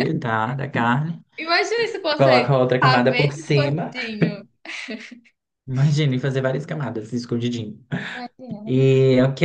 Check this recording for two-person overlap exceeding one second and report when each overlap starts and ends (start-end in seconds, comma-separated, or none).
2.2-3.9